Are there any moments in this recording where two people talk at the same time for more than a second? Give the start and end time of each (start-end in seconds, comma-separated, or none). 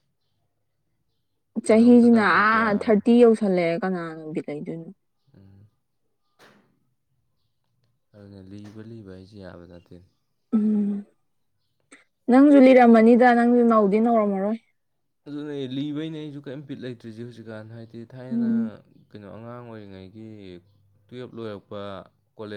1.6-3.0